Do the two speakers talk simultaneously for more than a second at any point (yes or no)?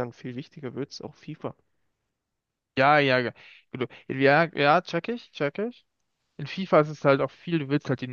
no